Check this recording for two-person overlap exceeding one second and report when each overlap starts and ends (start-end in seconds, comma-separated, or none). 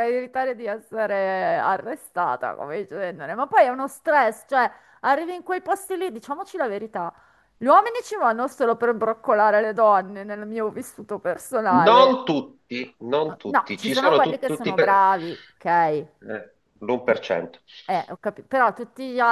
13.4-15.0